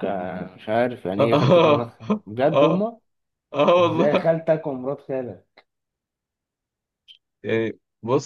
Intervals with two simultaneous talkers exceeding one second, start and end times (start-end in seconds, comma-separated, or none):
1.2-2.9